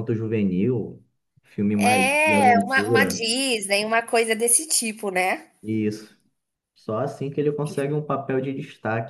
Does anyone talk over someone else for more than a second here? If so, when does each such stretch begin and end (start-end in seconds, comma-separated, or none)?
1.8-3.2